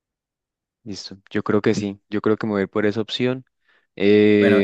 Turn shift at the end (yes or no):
yes